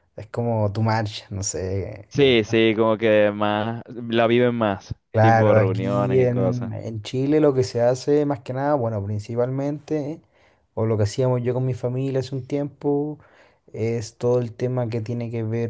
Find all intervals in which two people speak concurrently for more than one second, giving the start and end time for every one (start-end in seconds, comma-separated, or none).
5.1-6.7